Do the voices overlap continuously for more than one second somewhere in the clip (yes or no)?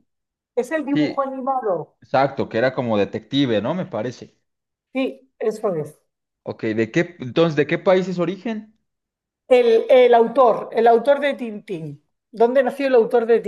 no